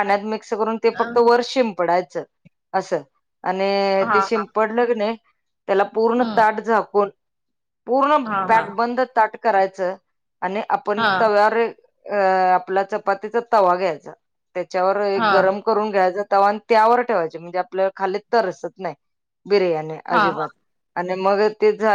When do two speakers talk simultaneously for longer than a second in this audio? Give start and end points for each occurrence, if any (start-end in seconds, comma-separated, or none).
none